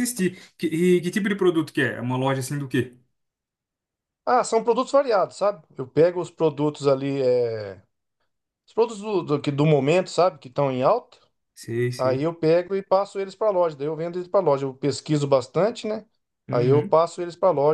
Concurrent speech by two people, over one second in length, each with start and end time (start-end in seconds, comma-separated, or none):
none